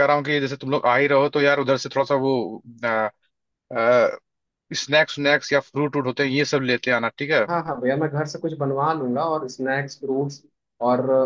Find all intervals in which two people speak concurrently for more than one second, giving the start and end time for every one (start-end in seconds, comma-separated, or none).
none